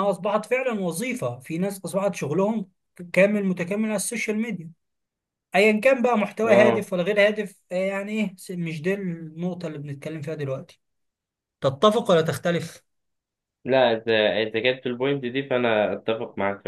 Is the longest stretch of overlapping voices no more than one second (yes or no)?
yes